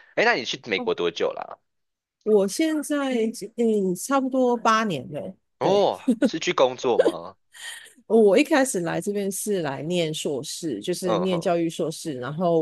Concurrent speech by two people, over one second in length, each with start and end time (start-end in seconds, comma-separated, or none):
none